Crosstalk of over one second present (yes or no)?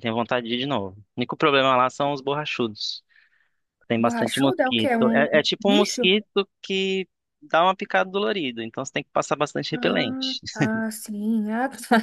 yes